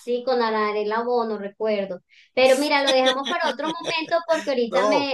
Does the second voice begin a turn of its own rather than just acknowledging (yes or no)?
yes